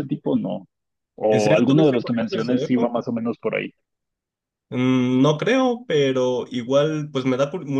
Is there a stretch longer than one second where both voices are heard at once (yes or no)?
yes